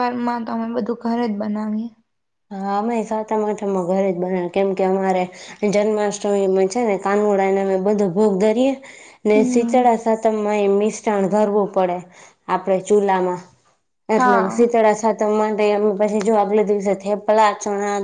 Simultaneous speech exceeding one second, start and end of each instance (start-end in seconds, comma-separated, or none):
none